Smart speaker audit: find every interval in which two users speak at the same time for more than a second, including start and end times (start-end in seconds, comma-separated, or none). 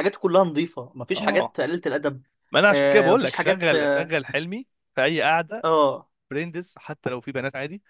2.7-4.1